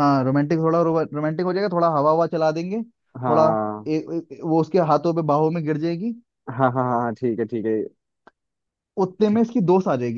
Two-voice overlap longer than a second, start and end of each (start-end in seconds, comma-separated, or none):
none